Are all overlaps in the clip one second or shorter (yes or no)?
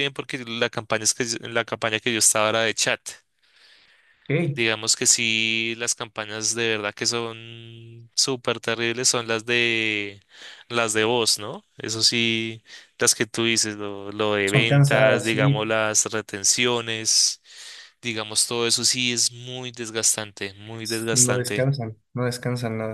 no